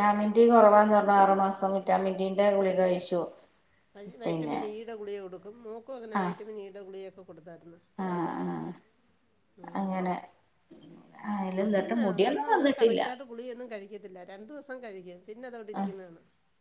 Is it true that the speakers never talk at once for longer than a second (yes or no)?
no